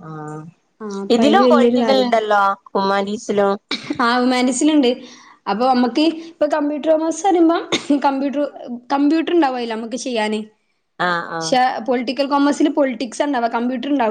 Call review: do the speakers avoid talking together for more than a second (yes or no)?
yes